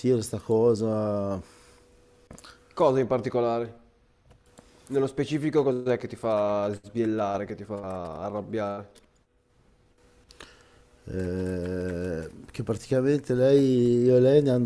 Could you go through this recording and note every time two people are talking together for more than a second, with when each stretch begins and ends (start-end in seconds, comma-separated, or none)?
none